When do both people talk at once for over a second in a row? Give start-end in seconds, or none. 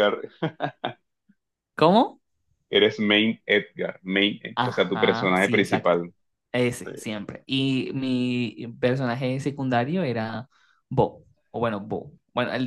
4.5-6.0